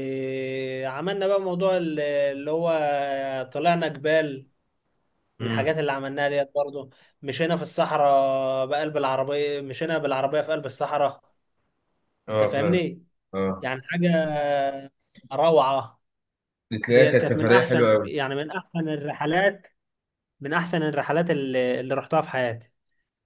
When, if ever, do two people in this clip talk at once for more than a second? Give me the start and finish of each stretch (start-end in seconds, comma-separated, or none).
16.9-18.1